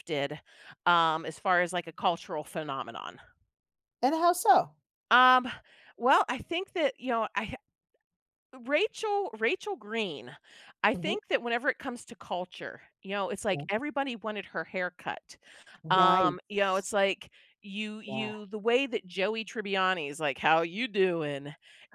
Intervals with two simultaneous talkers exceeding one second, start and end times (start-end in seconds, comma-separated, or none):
none